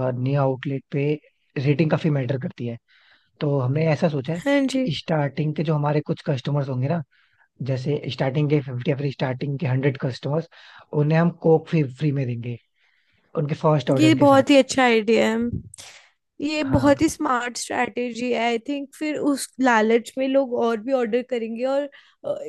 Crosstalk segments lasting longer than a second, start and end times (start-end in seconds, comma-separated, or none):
none